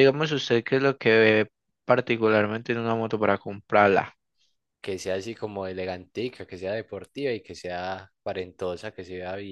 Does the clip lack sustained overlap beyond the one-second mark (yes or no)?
yes